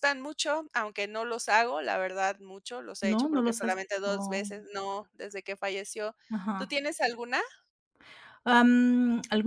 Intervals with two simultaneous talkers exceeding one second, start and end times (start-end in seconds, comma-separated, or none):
3.0-4.5